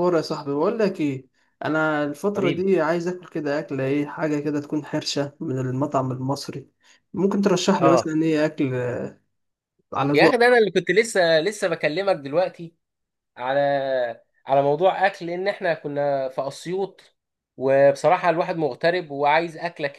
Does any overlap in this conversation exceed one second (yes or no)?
no